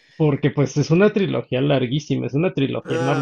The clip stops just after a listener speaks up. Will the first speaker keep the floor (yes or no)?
yes